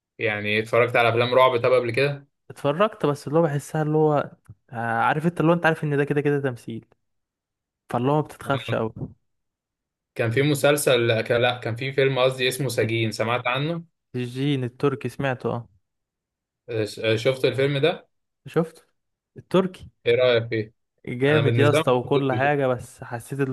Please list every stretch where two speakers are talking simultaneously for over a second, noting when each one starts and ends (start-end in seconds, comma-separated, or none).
21.3-22.5